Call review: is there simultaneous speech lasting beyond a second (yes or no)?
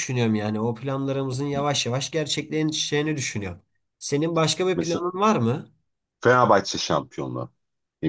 no